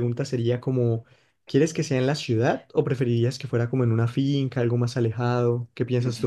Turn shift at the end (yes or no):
yes